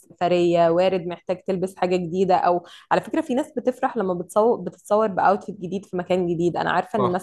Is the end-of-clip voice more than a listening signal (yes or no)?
no